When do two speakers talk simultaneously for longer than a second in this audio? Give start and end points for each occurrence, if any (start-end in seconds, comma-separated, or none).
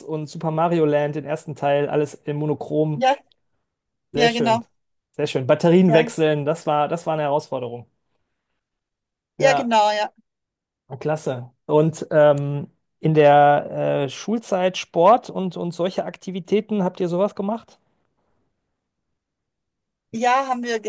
none